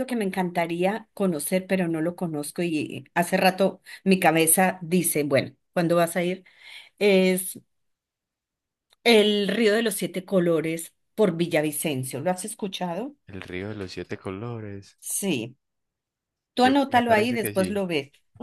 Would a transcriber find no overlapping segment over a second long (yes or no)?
no